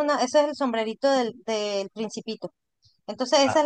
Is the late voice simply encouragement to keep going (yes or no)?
yes